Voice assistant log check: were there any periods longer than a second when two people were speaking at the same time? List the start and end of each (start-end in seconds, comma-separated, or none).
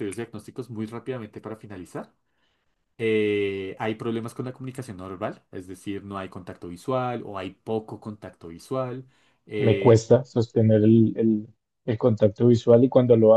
none